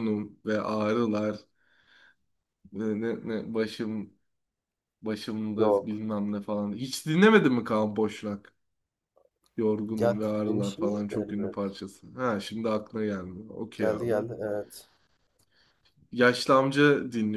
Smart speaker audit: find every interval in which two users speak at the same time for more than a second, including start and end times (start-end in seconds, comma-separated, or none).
10.0-11.8